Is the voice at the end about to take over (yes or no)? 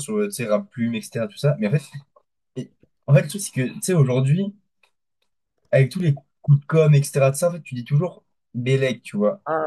yes